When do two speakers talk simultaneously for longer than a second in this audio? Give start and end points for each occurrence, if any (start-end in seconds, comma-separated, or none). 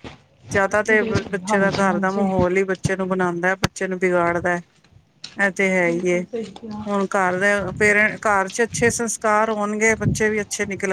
0.9-2.3